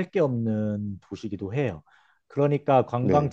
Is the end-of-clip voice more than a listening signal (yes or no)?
no